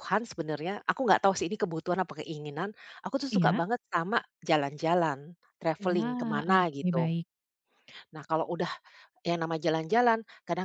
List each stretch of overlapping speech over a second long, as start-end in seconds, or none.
5.8-7.1